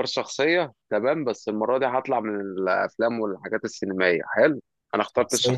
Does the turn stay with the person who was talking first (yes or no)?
no